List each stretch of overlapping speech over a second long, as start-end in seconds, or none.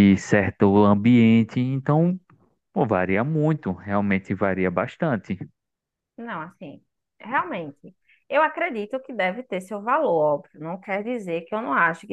none